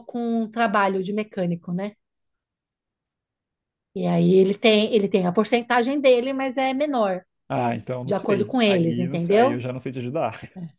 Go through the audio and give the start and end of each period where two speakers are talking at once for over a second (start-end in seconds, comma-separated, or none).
8.1-9.6